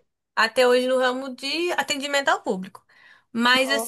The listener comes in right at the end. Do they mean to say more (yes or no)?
no